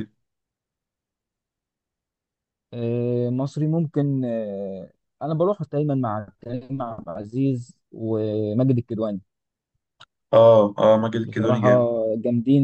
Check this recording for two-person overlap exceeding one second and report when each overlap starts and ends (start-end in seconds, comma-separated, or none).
none